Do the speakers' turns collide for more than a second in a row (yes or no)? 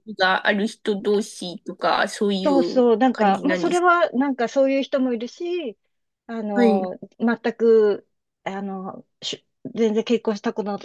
yes